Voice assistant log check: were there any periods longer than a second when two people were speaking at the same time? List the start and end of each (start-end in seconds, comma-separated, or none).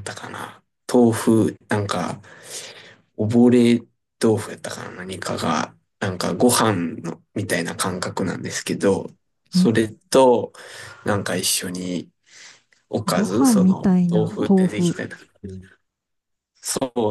13.1-15.0